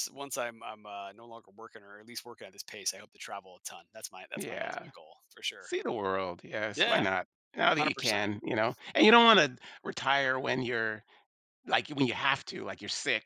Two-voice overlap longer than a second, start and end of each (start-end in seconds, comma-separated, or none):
6.7-8.3